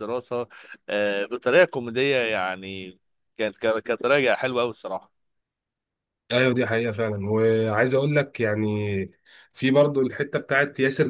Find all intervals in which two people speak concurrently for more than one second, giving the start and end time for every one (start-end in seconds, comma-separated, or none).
none